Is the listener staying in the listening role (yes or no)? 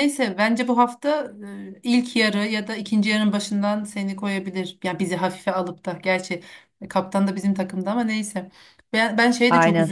yes